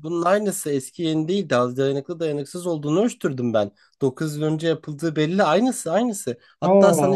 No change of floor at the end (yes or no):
yes